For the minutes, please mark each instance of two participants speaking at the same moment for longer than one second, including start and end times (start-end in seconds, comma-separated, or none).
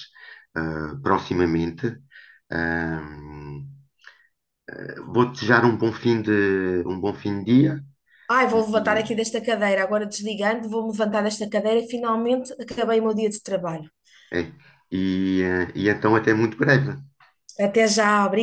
none